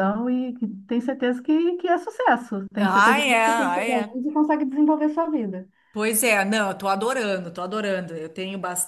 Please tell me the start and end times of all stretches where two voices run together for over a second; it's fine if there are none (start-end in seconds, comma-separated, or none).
2.8-4.2